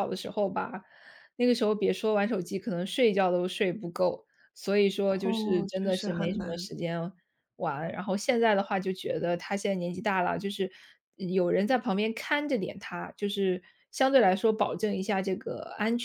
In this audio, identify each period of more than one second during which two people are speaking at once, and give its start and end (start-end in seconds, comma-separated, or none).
5.0-6.7